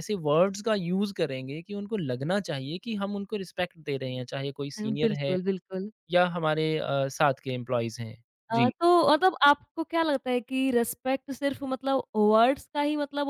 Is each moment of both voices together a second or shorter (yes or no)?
yes